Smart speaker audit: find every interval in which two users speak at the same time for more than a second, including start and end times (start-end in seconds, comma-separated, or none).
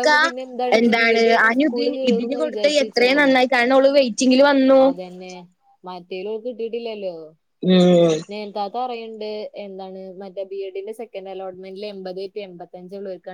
1.2-3.3